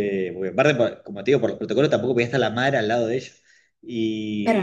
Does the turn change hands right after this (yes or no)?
yes